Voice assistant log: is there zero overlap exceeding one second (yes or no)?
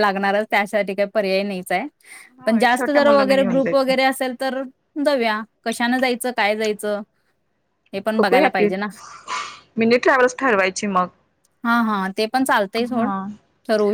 no